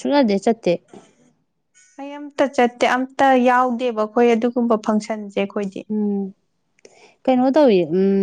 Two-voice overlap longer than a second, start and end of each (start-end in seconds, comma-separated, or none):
none